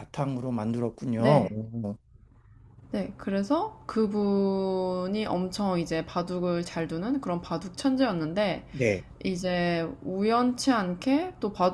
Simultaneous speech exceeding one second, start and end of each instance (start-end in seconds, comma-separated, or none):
none